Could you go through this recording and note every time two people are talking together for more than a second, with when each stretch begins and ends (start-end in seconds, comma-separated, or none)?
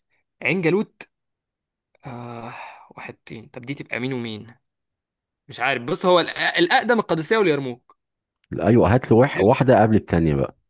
none